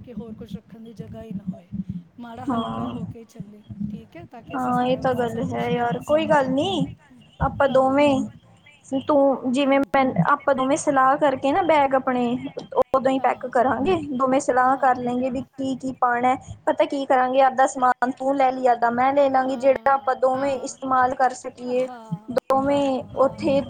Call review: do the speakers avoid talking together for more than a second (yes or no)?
no